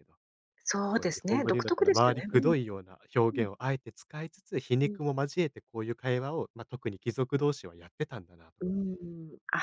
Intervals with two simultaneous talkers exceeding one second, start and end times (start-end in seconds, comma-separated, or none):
0.9-2.5